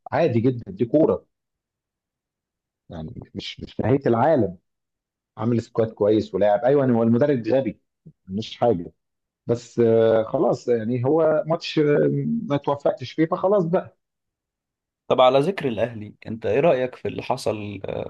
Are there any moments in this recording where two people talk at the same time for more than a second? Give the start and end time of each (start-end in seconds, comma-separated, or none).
none